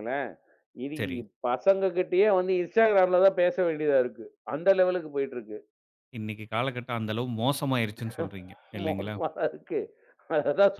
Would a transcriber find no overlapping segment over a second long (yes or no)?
yes